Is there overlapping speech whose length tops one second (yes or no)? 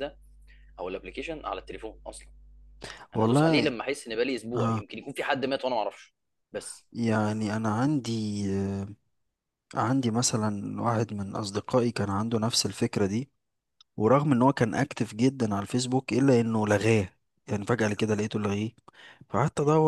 no